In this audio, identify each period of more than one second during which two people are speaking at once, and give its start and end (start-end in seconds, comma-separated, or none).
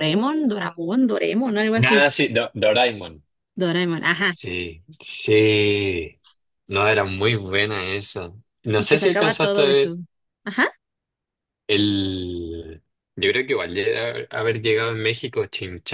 8.7-9.9